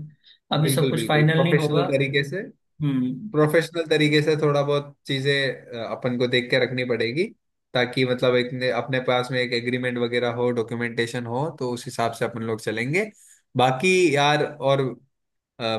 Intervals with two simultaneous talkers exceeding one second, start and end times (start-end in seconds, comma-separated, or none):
0.6-1.8